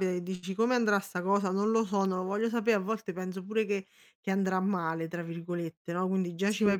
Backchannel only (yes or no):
yes